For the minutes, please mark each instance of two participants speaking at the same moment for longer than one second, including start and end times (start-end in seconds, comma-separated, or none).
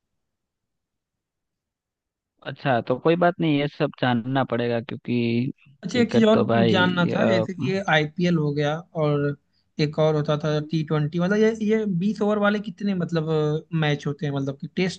5.9-7.5